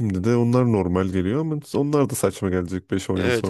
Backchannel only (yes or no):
no